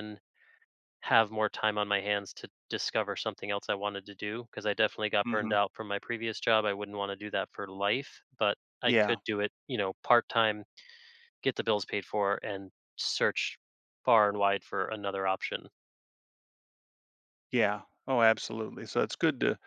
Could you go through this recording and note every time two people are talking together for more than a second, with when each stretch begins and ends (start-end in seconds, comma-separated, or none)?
none